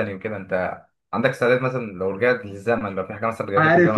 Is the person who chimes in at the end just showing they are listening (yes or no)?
no